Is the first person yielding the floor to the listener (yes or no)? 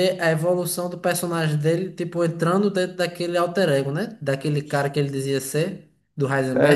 yes